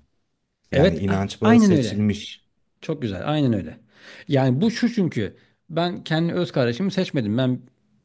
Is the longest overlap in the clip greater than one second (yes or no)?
yes